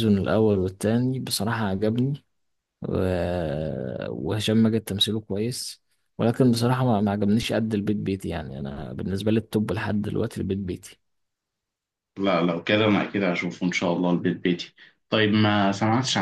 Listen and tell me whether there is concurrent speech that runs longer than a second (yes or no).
no